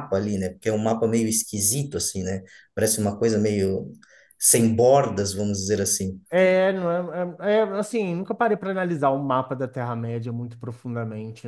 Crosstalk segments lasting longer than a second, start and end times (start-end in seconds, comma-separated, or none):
none